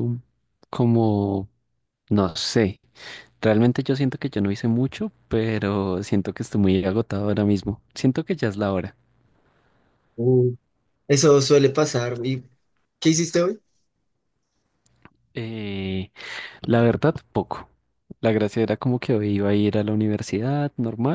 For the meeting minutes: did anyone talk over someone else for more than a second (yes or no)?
no